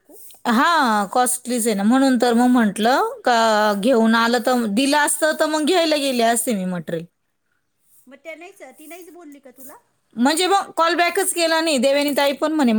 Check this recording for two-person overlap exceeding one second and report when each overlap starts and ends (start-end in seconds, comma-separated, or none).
none